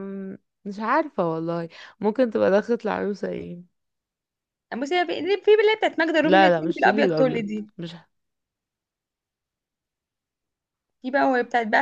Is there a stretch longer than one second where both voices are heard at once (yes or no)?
yes